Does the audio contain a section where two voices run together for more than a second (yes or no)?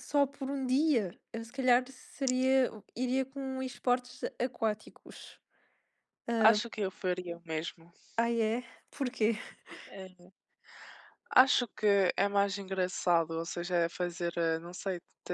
no